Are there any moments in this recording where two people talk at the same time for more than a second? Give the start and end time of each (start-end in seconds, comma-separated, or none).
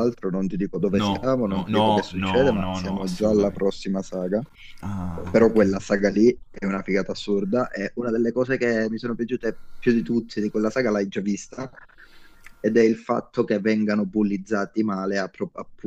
0.9-3.6